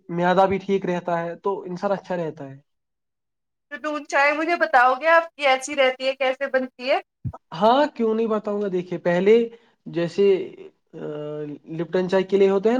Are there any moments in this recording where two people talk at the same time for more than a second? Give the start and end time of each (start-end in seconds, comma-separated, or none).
none